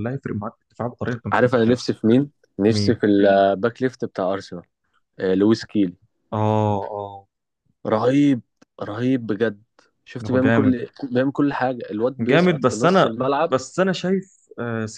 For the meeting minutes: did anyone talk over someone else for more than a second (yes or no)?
yes